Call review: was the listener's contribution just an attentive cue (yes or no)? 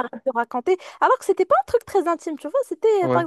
yes